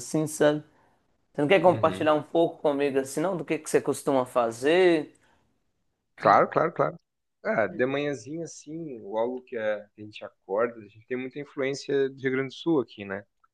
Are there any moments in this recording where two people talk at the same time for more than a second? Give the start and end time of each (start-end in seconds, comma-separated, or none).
none